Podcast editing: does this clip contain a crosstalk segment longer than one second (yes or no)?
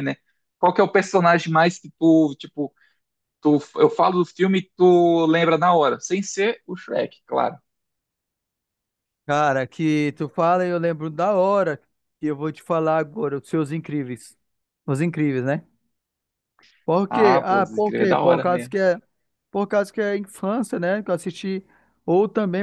yes